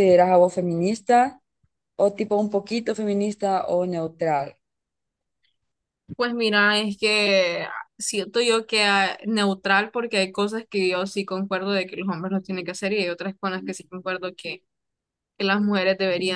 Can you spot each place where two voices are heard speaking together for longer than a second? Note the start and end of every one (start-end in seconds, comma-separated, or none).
none